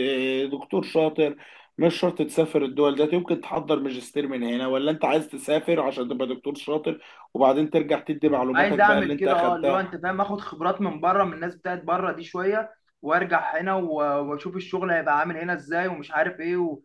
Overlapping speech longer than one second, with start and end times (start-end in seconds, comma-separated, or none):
8.5-9.8